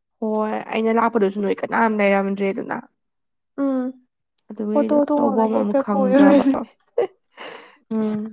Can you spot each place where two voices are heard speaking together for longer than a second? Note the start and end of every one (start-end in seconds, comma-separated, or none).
4.8-6.4